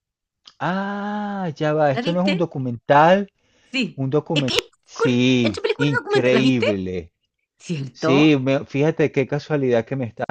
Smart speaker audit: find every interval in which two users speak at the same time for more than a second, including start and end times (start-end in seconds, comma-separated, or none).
3.9-6.7